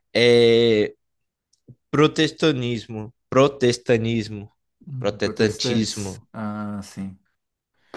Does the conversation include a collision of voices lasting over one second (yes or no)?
yes